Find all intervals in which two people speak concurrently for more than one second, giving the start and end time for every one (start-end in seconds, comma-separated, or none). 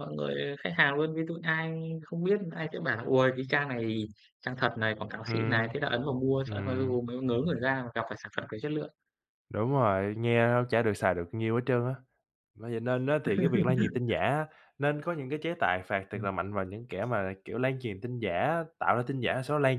none